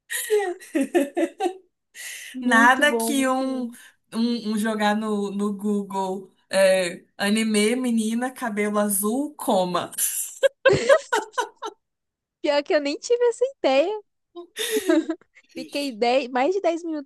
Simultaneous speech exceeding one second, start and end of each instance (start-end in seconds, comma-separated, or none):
2.4-3.6